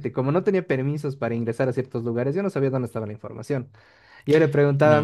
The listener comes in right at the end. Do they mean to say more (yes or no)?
no